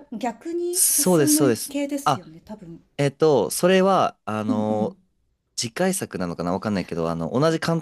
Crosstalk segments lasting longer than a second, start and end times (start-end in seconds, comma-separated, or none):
0.7-2.3